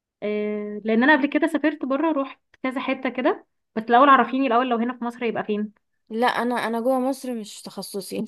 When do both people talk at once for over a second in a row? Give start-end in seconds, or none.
none